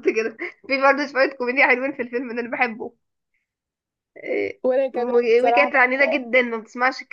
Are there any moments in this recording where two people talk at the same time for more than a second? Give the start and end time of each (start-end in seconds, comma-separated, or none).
4.6-6.2